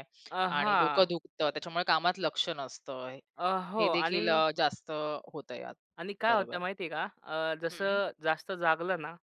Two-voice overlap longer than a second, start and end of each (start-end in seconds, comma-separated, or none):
none